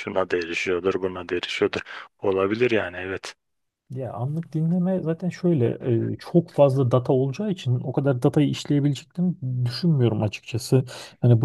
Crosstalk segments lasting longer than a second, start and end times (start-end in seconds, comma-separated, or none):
none